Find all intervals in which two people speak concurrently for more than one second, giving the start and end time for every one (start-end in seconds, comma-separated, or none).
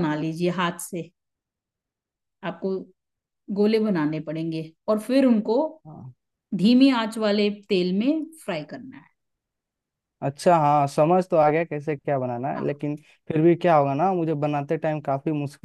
none